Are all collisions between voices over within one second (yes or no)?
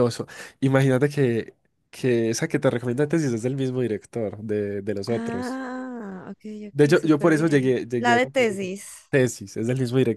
no